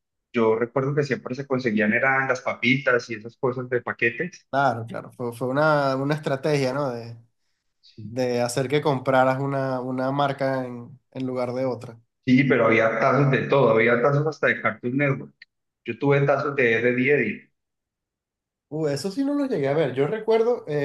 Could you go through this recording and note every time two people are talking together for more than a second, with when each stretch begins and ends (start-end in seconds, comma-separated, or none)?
none